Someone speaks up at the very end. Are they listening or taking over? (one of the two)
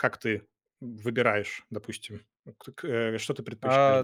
taking over